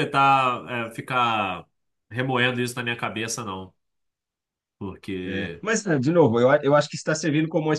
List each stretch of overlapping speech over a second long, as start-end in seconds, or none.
none